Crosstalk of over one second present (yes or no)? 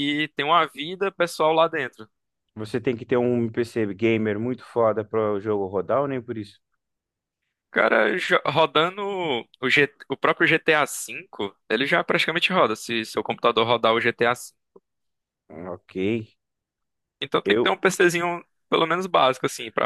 no